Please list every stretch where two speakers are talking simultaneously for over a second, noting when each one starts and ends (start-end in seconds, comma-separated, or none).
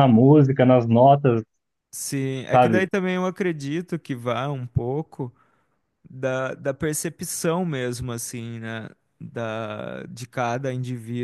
none